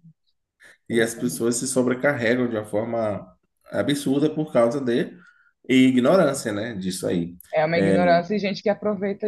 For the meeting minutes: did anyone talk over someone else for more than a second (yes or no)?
no